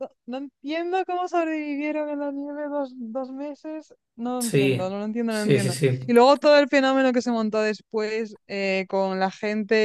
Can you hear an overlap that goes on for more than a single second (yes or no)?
yes